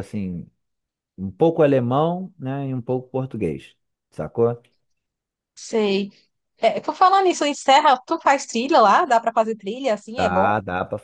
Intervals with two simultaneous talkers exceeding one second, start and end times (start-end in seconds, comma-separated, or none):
none